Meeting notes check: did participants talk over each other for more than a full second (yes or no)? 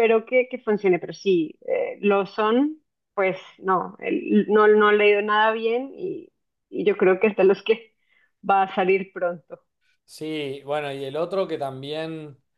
no